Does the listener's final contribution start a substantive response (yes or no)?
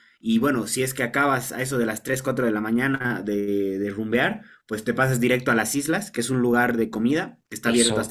no